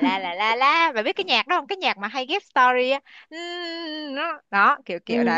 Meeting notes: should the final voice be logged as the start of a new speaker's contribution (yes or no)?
yes